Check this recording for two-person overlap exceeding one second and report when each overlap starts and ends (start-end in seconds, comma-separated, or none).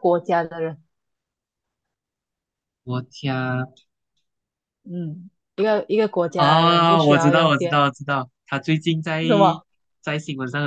6.4-7.9